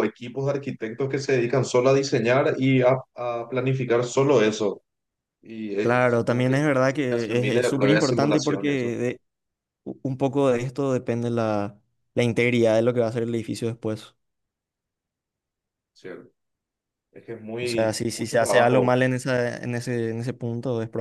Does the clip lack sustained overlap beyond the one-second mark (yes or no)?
no